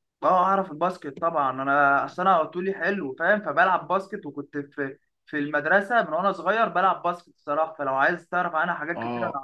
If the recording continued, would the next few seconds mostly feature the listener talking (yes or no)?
yes